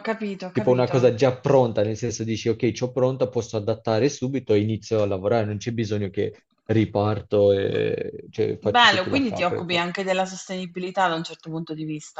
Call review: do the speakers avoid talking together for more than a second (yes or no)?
no